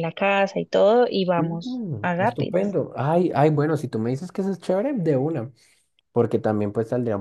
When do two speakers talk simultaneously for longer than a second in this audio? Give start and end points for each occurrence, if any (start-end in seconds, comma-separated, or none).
1.4-2.8